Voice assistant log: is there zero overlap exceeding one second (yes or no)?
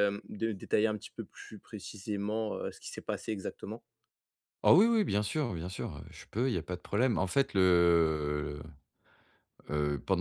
yes